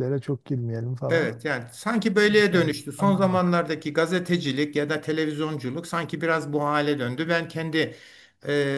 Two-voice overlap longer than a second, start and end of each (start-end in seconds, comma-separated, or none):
2.3-3.6